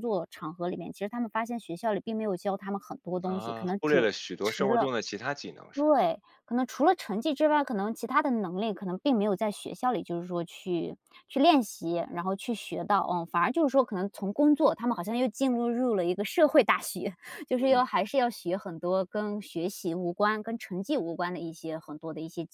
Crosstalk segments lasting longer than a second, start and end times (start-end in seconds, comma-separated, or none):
3.2-4.9